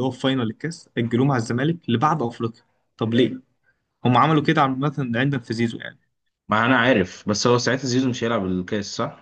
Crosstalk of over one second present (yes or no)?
no